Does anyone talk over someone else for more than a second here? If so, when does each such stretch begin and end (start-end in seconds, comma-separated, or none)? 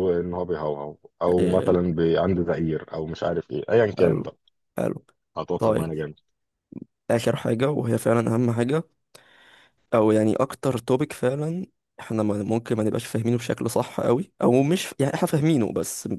none